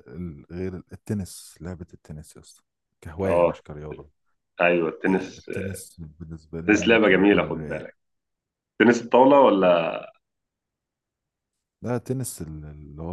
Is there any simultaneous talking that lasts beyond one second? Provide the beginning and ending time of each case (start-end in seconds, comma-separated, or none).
6.6-7.9